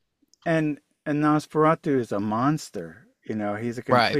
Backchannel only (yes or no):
yes